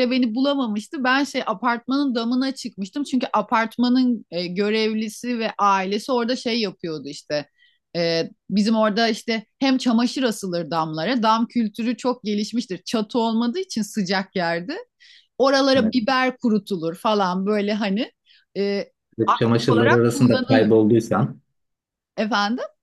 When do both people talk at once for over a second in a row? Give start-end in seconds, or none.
19.3-20.7